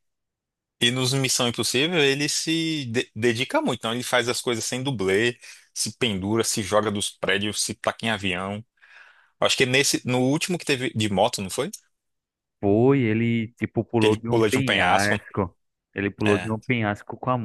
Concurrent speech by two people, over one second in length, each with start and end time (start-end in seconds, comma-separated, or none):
14.0-15.2